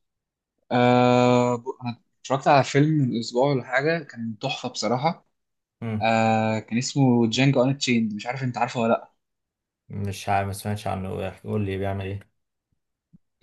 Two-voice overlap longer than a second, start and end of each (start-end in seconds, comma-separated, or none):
none